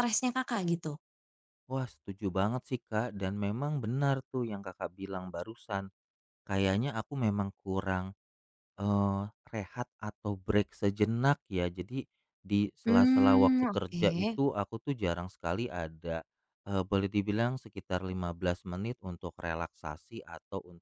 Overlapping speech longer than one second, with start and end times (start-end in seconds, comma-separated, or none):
12.8-14.1